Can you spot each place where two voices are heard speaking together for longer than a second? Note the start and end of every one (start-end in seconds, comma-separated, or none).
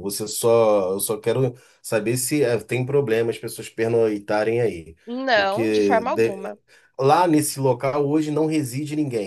5.3-6.5